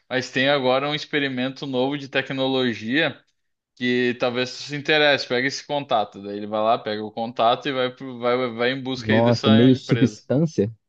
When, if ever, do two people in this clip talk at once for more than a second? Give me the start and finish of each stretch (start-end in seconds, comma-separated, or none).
9.0-10.2